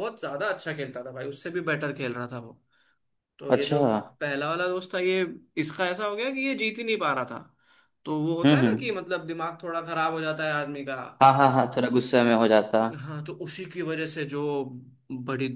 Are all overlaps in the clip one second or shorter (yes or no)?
yes